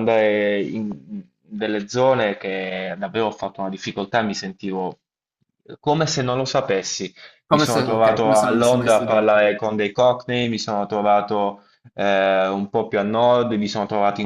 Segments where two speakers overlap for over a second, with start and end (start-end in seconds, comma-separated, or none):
7.5-9.4